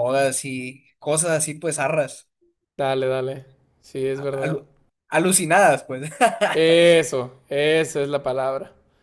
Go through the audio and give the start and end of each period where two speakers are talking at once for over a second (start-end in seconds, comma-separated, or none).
none